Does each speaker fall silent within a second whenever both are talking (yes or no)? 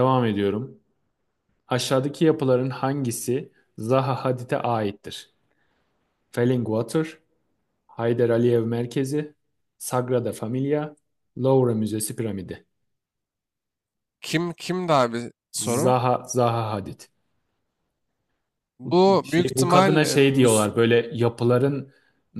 no